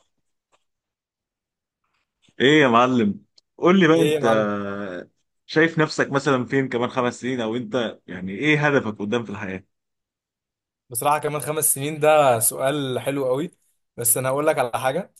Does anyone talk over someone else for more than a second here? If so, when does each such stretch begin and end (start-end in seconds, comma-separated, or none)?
none